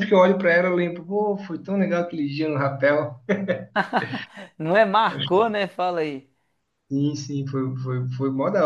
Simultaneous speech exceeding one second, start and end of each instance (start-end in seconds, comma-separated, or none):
none